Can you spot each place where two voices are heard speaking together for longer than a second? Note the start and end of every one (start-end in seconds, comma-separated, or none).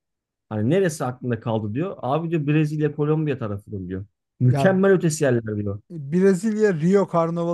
none